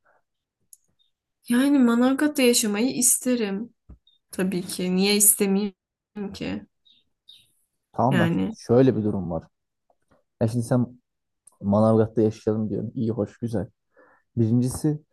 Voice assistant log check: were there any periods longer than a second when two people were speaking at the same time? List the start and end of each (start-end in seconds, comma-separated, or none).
none